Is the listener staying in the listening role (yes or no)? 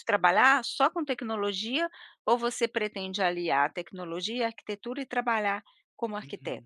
no